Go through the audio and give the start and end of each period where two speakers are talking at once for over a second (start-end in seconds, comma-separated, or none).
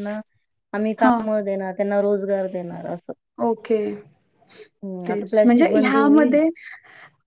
5.1-6.4